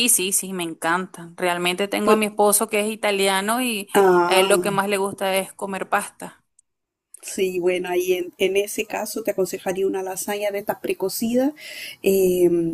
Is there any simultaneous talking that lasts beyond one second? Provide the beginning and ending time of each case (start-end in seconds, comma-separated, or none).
none